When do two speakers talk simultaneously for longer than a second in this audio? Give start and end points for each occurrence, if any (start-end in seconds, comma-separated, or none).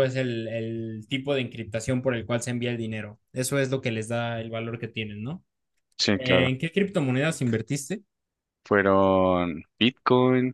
none